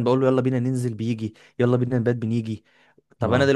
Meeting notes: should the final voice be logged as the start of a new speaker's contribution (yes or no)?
no